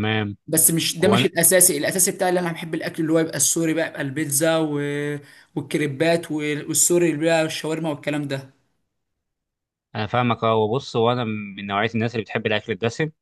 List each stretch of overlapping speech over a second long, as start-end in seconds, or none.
none